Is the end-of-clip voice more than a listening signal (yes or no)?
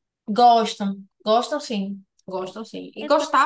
no